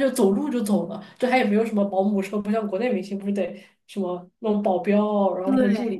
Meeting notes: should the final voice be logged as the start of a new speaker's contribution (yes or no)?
no